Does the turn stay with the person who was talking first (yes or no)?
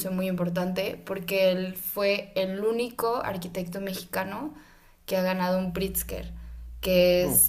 yes